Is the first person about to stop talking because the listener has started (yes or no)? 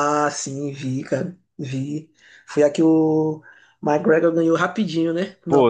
yes